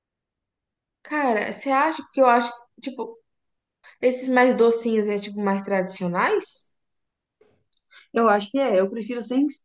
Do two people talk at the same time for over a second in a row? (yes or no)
no